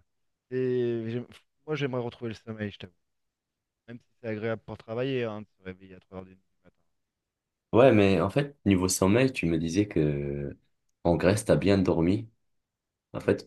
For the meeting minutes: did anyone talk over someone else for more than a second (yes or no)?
no